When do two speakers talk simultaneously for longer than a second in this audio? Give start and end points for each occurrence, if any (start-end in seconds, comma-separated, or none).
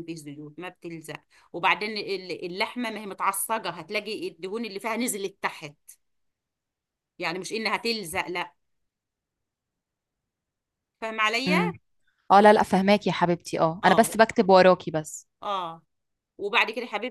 none